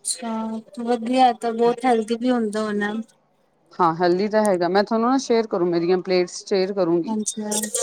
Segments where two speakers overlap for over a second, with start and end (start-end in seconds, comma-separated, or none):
none